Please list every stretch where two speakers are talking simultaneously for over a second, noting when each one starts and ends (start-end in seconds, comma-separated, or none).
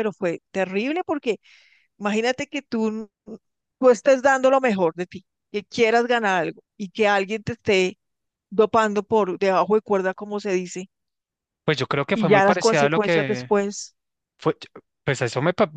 12.1-13.5